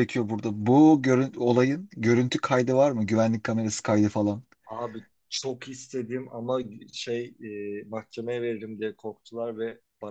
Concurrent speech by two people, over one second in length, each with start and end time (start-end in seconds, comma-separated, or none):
none